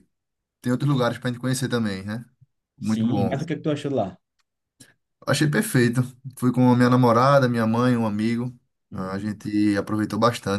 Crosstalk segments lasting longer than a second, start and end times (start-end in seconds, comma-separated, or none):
none